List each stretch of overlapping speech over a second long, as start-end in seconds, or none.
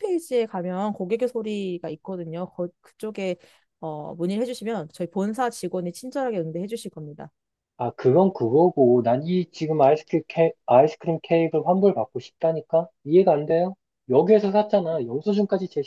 none